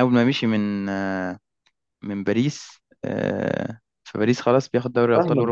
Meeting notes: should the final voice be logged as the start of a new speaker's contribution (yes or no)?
yes